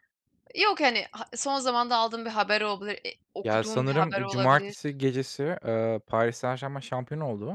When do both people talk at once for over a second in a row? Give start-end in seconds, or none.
3.4-4.7